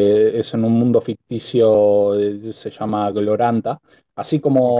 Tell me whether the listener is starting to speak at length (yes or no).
no